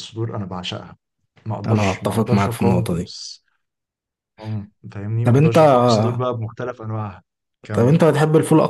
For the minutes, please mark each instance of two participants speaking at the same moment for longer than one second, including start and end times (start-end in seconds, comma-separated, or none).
1.7-3.0